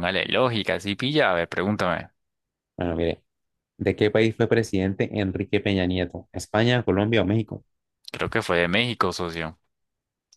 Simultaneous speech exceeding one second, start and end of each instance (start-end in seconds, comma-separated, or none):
none